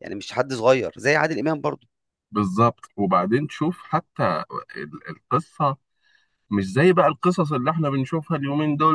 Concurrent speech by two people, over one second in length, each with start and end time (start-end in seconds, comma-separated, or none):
none